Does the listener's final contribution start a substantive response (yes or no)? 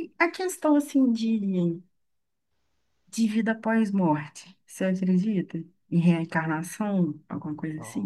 yes